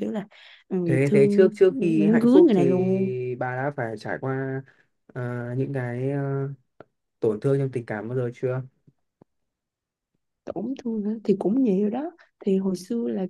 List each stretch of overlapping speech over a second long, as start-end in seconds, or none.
0.8-3.1